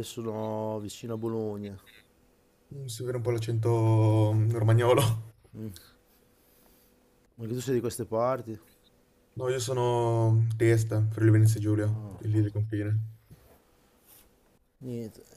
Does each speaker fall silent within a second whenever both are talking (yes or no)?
yes